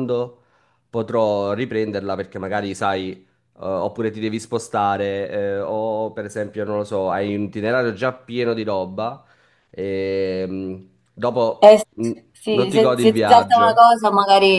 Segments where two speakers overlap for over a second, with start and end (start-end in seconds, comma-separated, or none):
12.5-13.8